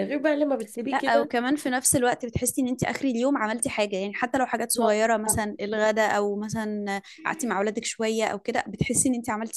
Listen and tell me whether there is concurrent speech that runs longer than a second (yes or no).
no